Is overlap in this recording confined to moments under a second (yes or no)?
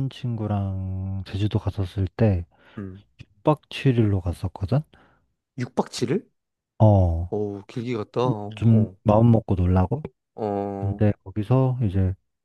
yes